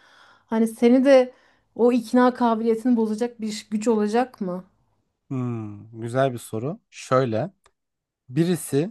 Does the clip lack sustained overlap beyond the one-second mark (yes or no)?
yes